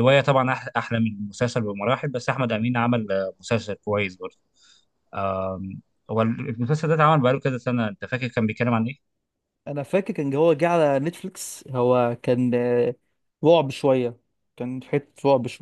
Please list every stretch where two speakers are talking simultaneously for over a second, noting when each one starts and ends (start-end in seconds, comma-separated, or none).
none